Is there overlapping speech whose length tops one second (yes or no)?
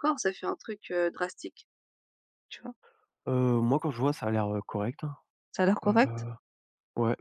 no